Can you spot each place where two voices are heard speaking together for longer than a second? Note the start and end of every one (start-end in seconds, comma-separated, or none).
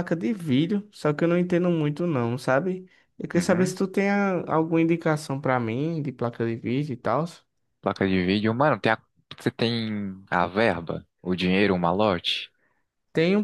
none